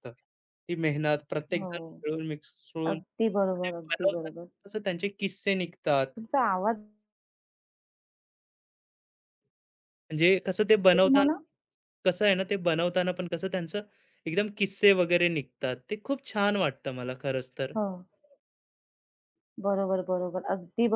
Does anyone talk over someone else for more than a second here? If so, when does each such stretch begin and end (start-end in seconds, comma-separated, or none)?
2.9-4.3